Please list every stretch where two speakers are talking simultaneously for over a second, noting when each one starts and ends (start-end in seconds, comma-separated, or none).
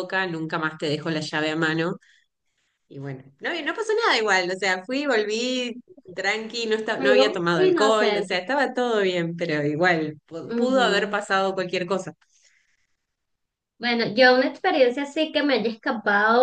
7.0-8.4